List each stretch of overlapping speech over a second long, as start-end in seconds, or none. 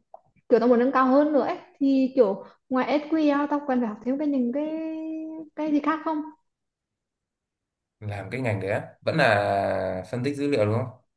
none